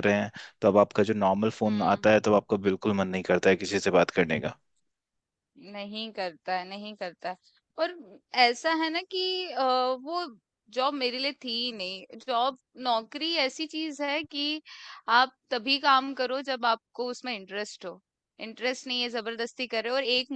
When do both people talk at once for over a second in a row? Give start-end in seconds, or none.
none